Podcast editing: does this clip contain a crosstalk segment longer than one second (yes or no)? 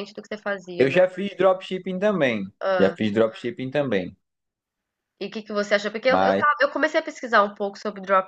no